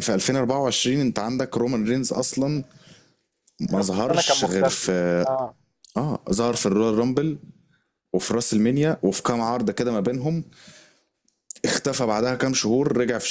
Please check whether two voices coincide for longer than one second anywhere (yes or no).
yes